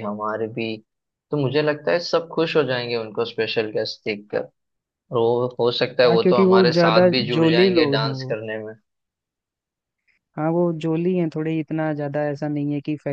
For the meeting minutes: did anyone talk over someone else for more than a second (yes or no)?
yes